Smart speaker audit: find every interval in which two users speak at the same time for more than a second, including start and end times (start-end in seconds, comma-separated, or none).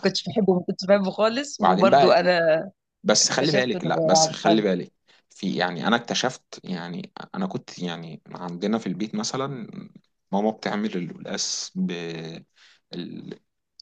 3.2-4.7